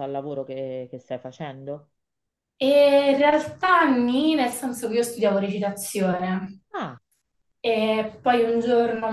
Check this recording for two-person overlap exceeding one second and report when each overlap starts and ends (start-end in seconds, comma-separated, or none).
none